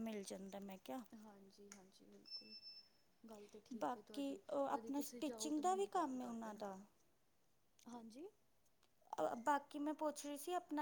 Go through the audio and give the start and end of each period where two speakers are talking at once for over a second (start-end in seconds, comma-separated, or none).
3.8-6.6